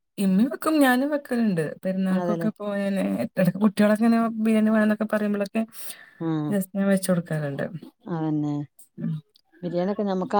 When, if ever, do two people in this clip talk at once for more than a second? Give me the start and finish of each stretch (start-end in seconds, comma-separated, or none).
none